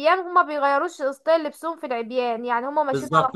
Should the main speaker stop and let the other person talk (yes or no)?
yes